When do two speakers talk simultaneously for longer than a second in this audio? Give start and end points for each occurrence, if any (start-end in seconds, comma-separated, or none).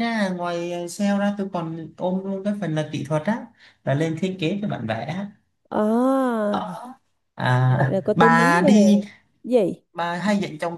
7.7-9.0